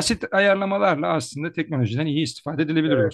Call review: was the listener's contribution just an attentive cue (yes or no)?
no